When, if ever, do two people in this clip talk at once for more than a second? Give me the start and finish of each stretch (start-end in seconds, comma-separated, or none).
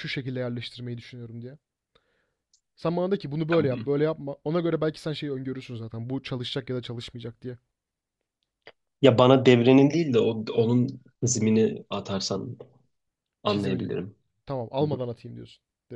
none